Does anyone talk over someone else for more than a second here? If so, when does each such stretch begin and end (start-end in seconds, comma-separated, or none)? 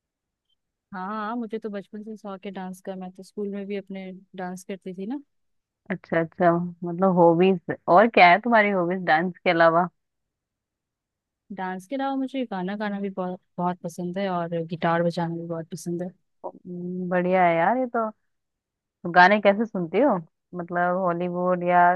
none